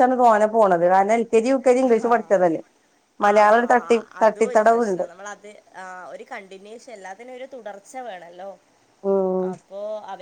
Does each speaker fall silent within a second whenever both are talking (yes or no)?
no